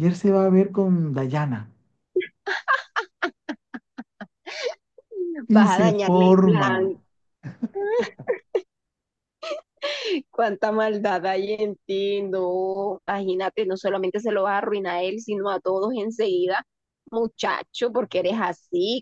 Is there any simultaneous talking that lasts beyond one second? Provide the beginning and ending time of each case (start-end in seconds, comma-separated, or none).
5.5-7.0